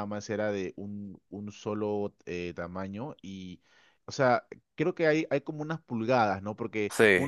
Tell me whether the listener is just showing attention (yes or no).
yes